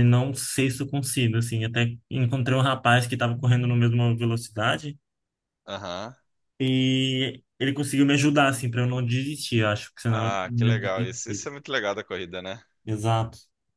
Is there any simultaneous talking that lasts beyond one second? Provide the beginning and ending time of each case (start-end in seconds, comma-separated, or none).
10.1-11.5